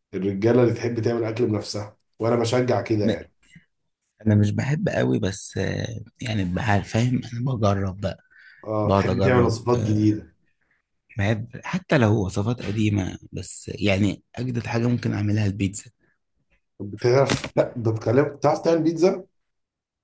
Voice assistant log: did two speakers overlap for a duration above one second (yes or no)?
yes